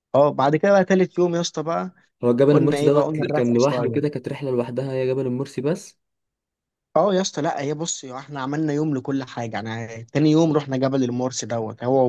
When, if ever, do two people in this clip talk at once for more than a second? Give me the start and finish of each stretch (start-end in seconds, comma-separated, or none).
2.5-4.0